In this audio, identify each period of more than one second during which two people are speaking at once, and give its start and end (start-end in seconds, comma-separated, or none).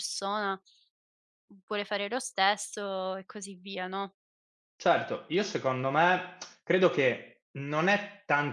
none